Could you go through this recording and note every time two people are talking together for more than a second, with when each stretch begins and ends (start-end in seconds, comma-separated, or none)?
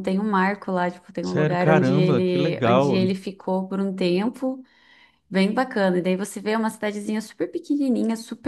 1.2-3.0